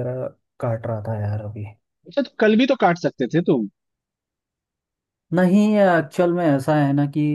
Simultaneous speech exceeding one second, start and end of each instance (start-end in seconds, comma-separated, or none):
none